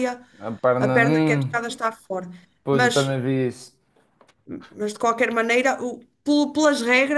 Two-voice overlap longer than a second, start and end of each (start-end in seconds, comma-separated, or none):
none